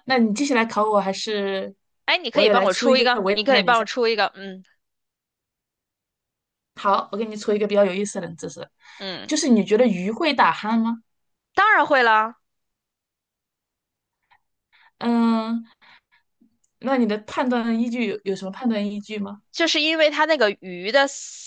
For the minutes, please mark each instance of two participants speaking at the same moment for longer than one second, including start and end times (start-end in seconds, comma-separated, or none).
2.3-3.8